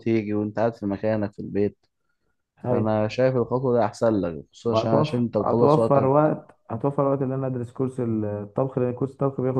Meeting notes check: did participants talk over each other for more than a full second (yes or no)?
yes